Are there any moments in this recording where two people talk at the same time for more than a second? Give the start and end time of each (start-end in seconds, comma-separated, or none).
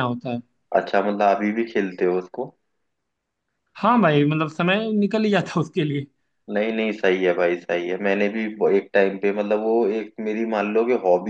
none